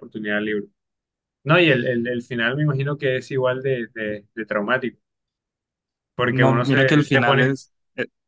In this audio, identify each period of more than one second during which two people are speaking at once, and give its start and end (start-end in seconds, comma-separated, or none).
6.3-7.6